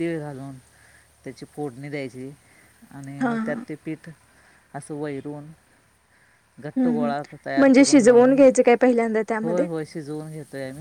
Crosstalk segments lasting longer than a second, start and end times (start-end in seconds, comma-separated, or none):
none